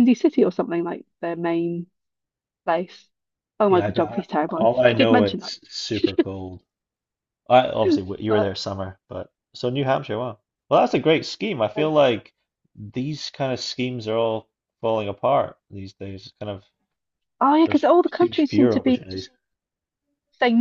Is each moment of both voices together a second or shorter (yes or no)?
no